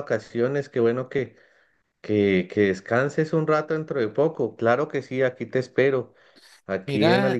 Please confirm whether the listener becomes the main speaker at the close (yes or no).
no